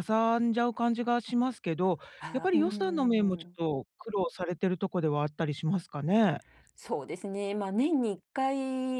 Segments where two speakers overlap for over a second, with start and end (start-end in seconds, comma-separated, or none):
2.2-3.6